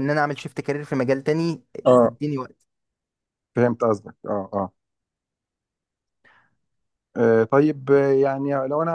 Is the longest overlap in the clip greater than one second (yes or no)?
no